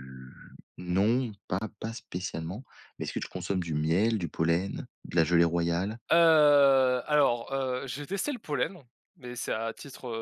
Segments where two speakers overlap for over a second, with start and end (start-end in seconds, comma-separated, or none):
none